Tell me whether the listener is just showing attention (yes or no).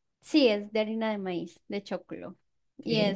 no